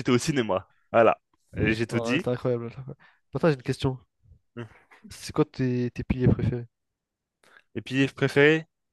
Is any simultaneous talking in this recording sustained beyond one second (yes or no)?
no